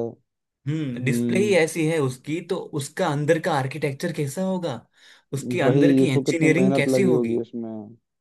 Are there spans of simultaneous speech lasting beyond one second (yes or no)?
yes